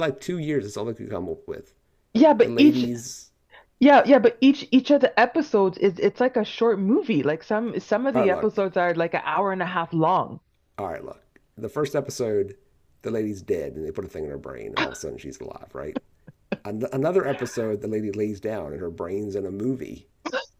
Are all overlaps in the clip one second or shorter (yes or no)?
yes